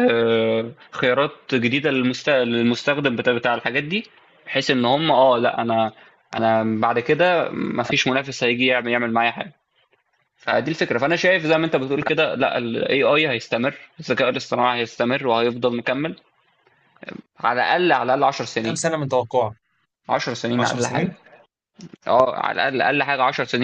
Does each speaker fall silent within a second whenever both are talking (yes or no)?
yes